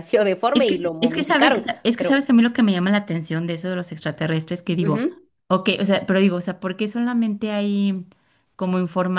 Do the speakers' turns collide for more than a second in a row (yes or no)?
yes